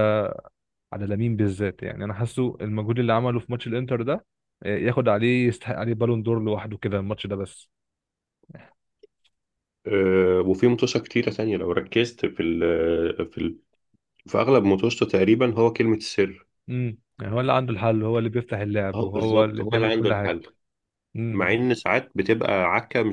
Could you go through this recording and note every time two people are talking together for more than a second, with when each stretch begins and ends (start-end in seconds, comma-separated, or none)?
18.9-20.4